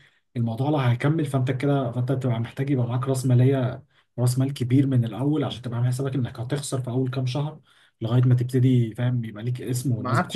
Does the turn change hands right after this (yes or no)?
yes